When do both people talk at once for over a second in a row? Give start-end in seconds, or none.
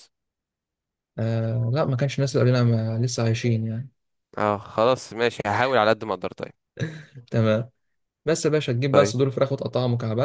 none